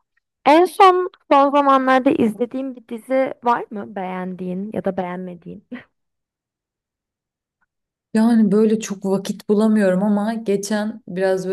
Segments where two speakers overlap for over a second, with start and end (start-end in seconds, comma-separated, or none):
none